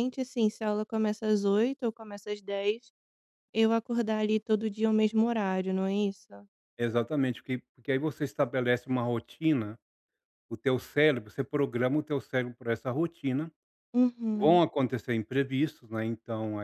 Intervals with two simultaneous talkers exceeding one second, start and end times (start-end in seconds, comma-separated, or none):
none